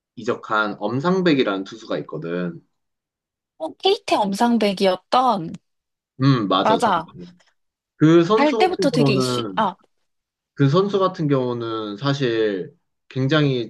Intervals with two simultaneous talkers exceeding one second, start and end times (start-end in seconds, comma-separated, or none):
8.3-9.6